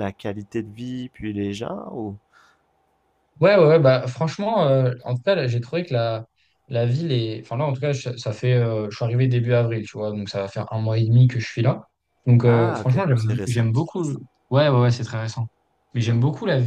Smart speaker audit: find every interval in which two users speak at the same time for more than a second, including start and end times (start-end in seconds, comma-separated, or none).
12.4-13.7